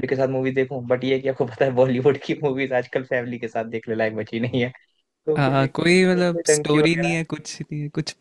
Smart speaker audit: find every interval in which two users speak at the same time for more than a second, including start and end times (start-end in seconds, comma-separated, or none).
5.4-7.2